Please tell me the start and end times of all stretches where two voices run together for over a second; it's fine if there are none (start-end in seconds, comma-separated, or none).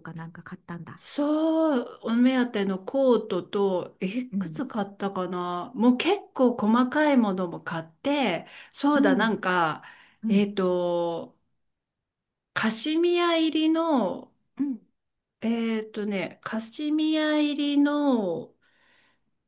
none